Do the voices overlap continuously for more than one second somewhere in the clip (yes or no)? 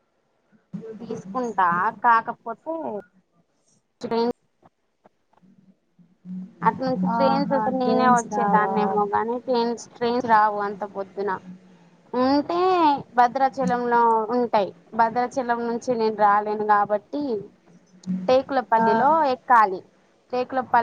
yes